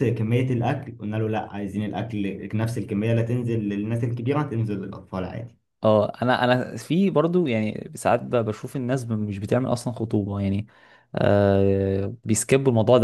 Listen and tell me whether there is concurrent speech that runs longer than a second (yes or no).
no